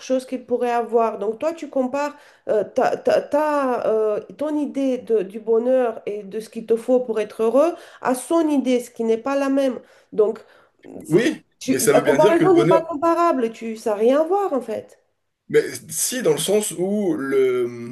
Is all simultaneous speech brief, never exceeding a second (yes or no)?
no